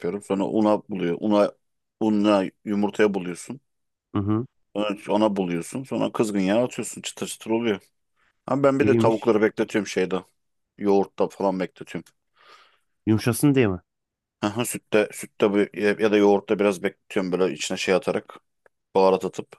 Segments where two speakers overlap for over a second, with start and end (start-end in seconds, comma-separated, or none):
none